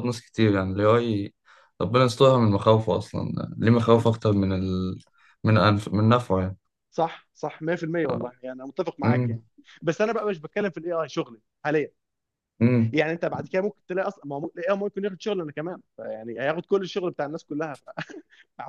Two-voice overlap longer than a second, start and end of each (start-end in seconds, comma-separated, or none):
none